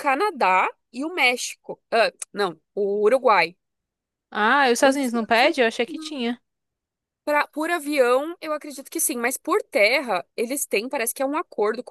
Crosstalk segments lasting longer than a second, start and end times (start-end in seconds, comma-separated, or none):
4.8-6.2